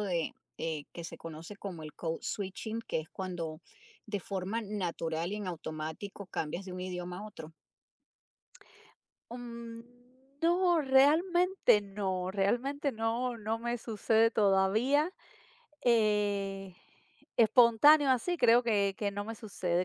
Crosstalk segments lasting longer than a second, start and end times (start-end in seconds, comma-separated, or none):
none